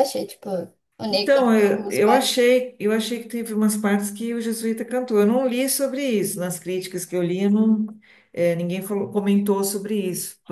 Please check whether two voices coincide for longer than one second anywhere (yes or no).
yes